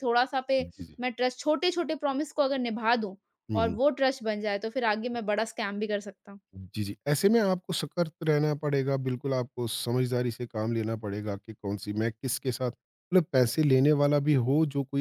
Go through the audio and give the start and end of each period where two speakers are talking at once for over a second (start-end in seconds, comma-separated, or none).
none